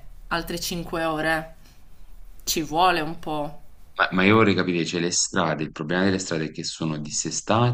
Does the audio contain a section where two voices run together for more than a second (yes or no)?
no